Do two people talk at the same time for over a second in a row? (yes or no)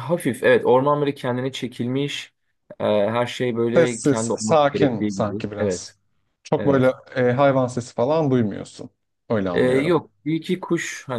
yes